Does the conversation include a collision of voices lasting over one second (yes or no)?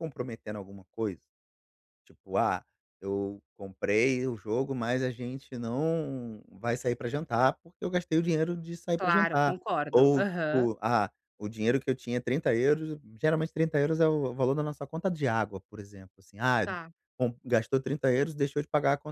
yes